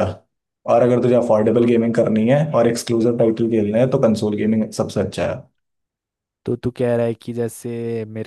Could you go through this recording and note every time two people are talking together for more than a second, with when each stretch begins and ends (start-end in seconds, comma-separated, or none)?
none